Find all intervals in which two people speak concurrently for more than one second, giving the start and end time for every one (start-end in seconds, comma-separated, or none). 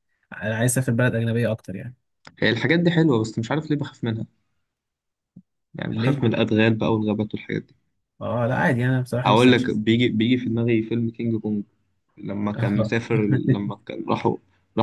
none